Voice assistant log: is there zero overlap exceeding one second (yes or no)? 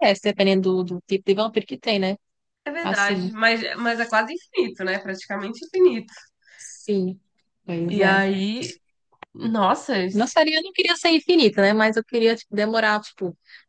yes